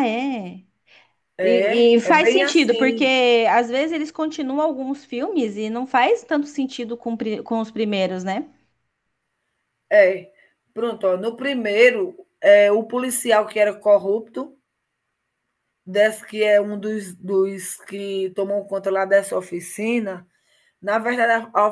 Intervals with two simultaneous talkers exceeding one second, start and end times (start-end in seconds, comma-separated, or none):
1.4-3.1